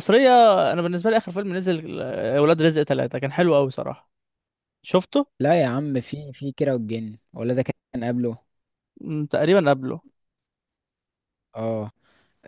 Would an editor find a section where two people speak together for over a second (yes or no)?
no